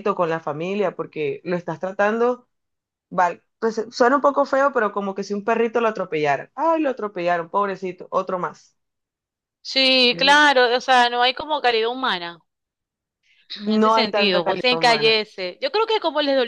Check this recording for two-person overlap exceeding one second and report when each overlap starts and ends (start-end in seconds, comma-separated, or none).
13.7-15.1